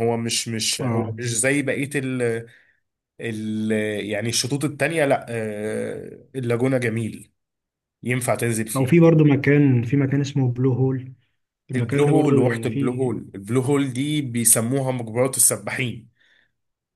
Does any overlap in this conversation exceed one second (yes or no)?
yes